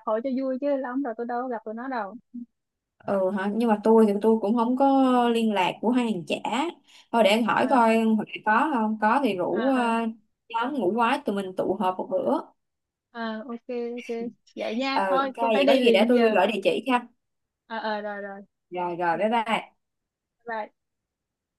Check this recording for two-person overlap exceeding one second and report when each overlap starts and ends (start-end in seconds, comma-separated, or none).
14.9-16.4